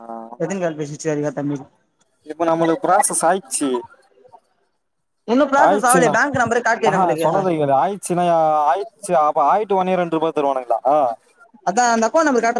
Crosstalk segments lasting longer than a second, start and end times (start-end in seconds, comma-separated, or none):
none